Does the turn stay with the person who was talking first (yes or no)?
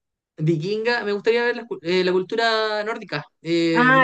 no